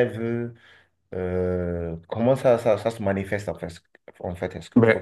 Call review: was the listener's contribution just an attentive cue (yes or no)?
no